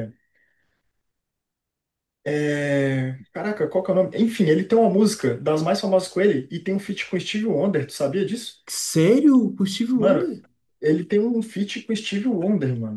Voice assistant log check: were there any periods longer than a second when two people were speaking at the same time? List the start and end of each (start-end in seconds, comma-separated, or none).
none